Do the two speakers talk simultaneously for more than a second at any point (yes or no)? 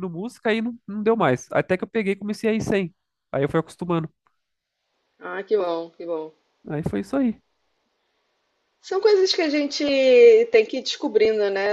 no